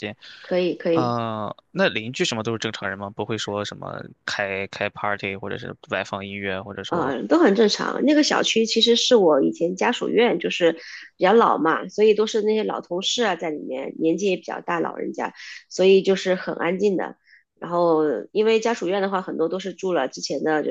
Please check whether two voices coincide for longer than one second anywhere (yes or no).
no